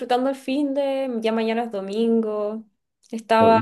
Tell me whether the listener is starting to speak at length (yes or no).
no